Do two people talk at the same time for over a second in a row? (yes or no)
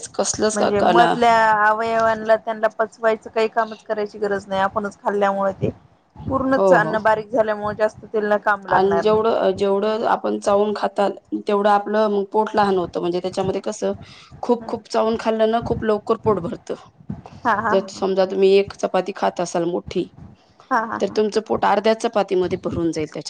no